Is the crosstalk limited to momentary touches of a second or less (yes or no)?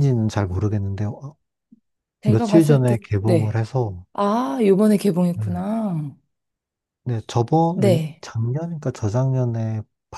no